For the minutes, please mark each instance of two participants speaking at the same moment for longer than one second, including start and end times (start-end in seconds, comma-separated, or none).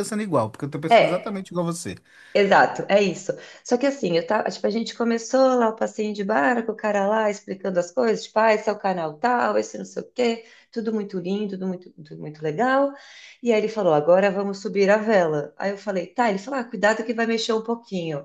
none